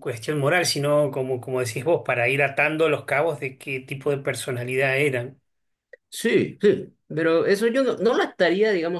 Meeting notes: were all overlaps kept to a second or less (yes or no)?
yes